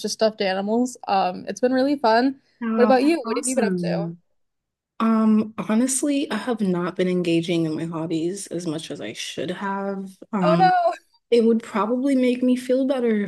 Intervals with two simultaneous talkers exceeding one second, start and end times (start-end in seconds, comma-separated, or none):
2.8-4.1